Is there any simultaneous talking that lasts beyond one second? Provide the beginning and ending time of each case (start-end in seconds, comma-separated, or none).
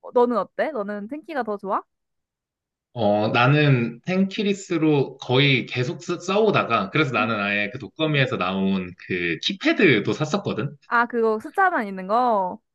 none